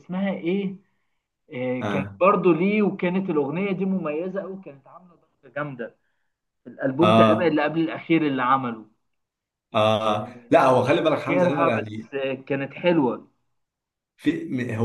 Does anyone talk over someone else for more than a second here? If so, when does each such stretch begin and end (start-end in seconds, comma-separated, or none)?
10.2-12.1